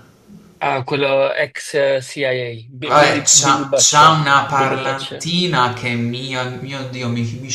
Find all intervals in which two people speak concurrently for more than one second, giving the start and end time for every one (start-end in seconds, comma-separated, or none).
2.9-5.3